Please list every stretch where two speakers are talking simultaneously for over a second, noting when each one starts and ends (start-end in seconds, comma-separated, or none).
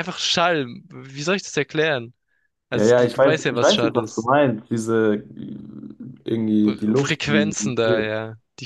2.7-4.3, 6.6-8.1